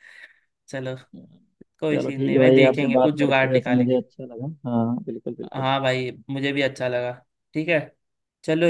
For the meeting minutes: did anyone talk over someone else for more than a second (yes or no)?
yes